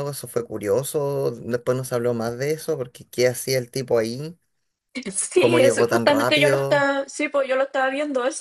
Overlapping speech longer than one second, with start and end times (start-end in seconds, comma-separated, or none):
5.3-6.8